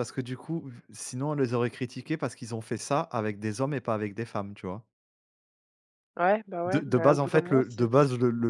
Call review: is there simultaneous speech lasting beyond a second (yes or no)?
yes